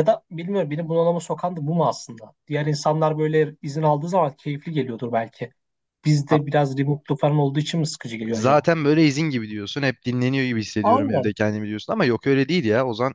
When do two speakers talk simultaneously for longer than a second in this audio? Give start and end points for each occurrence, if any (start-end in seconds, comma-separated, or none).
none